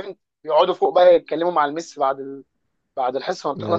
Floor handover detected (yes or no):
no